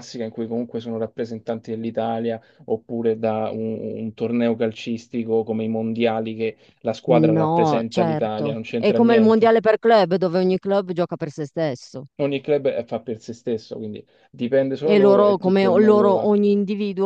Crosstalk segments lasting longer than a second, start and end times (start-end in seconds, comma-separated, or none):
7.1-9.5, 14.9-16.3